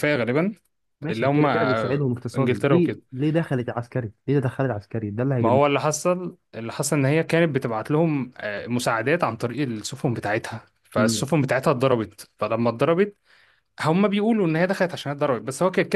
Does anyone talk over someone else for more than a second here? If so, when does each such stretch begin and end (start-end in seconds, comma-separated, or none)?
1.1-3.0